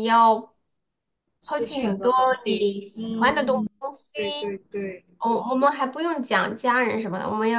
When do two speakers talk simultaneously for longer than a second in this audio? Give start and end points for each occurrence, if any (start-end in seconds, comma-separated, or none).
1.5-3.7